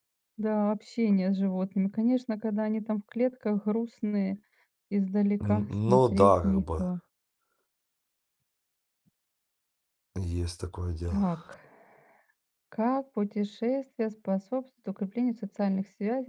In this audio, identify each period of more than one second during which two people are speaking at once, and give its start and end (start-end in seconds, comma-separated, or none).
5.4-6.8